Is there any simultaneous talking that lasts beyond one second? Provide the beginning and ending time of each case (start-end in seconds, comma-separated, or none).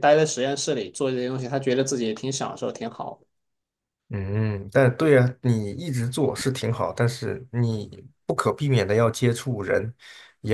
none